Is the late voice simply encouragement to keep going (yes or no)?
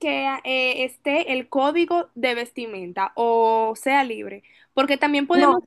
yes